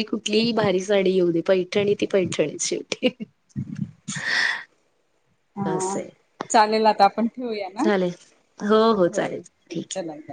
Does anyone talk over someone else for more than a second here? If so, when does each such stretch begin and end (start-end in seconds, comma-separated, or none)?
none